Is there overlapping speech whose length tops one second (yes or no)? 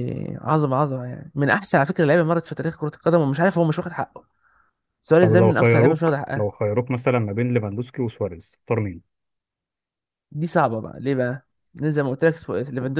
yes